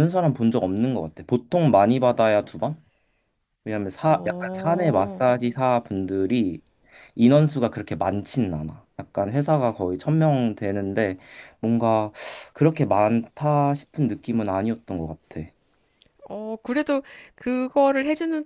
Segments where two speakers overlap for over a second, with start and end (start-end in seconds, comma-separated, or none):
4.0-5.3